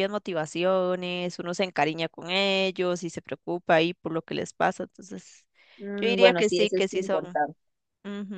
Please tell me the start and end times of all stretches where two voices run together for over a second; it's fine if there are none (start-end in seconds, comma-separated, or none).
6.0-7.4